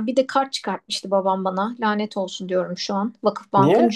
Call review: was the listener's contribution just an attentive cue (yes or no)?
yes